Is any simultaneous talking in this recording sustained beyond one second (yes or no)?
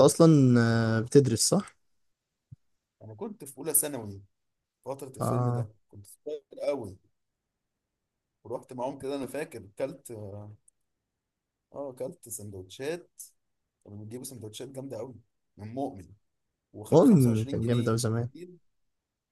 yes